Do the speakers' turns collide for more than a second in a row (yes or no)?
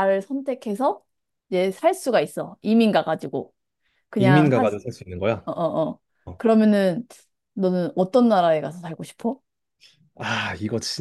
no